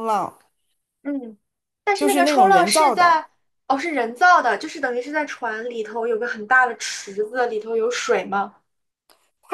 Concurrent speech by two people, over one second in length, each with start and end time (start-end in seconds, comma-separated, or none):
1.9-3.2